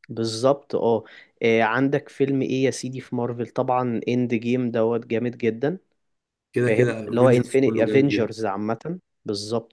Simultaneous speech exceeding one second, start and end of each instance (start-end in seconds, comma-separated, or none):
6.6-8.3